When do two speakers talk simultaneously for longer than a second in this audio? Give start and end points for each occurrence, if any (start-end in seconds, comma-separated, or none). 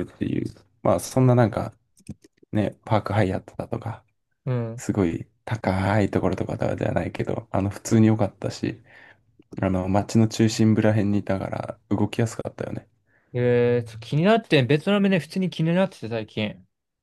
none